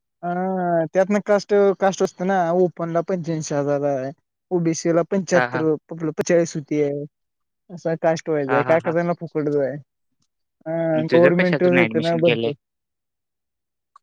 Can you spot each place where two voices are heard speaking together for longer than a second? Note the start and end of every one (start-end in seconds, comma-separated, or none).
10.9-12.5